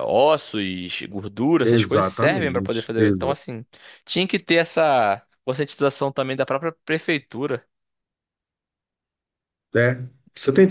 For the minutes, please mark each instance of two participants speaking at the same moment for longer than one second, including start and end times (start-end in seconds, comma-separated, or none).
1.6-3.3